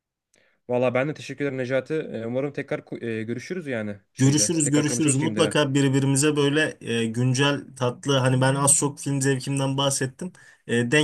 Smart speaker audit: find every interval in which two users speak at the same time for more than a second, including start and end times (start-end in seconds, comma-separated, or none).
4.2-5.6